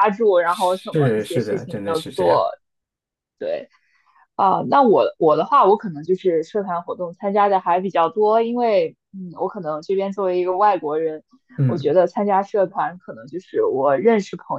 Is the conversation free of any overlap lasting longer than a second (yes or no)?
no